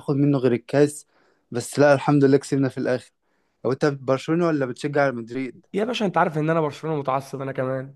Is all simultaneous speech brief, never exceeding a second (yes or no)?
yes